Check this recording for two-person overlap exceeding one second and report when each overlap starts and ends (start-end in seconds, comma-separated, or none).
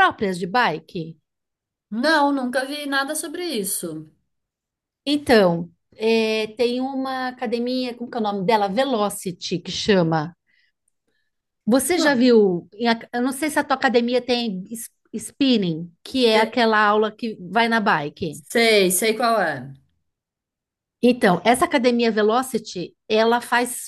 none